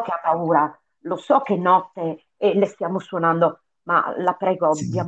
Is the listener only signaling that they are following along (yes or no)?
yes